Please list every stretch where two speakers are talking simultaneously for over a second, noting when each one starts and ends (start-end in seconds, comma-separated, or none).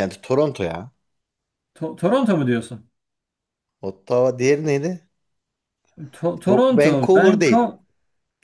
6.5-7.7